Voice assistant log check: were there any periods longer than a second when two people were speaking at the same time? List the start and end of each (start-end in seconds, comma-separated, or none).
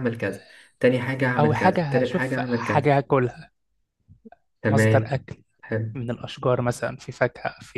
1.4-2.9